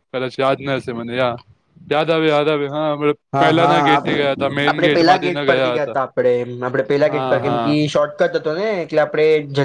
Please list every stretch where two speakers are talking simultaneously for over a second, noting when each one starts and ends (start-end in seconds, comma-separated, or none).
3.4-6.0